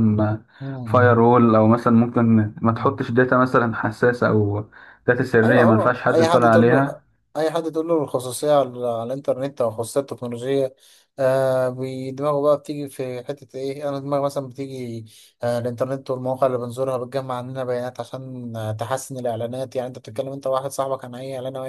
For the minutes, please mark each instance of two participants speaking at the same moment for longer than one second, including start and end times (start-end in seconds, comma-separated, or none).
5.4-7.0